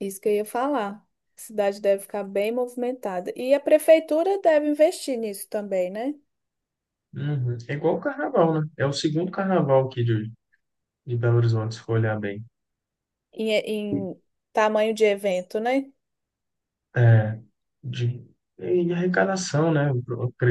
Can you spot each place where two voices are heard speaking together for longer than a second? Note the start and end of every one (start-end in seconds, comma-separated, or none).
none